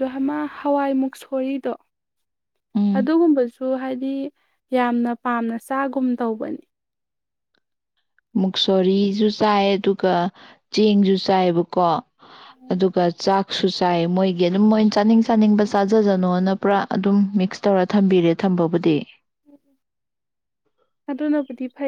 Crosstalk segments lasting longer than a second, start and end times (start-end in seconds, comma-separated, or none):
none